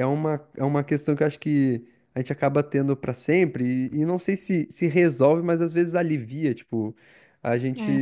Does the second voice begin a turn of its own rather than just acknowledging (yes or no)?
no